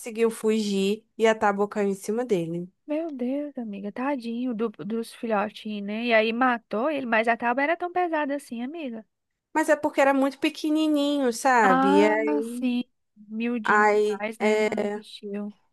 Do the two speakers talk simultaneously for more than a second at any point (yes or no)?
yes